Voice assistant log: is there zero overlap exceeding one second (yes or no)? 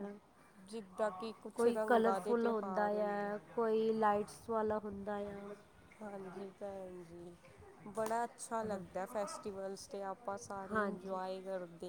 no